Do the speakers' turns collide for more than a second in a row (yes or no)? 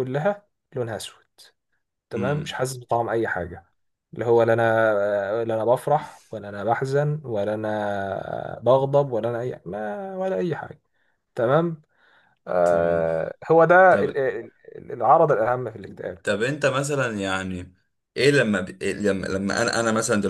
no